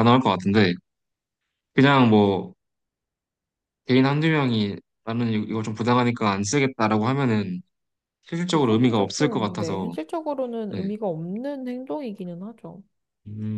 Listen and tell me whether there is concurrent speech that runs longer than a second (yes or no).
yes